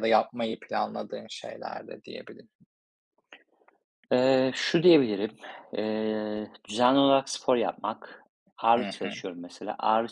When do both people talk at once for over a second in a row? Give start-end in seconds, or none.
none